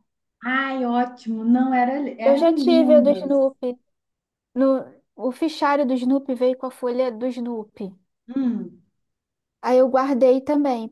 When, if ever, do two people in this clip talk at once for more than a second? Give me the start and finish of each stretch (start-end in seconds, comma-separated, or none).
2.2-3.4